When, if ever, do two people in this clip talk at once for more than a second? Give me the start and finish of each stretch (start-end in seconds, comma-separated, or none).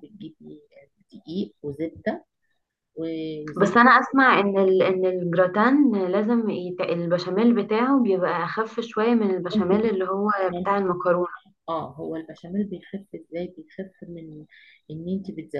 none